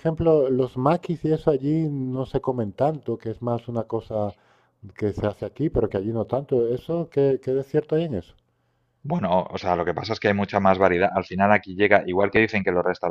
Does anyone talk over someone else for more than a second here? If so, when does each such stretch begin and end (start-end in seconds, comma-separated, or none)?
none